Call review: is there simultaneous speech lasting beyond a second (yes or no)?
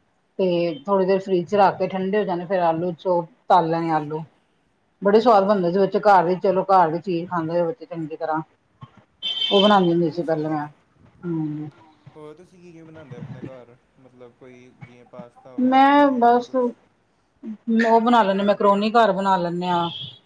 no